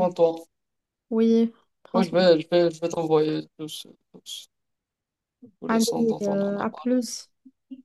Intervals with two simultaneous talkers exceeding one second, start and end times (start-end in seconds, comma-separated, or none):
5.7-6.9